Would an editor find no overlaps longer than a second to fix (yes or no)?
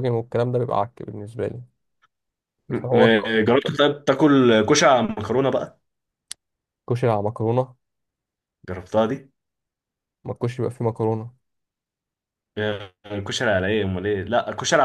yes